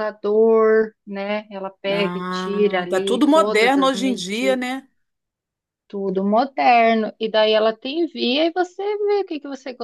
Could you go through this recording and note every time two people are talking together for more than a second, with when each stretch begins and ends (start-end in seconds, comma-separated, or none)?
1.9-4.6